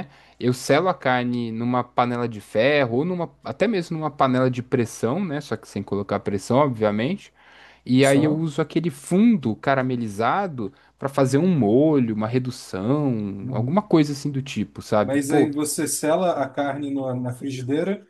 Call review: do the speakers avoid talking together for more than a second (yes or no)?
yes